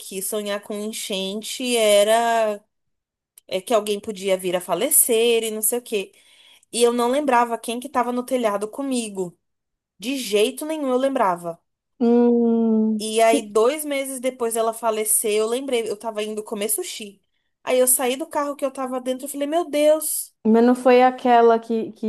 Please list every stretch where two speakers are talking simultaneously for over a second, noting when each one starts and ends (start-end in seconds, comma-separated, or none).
none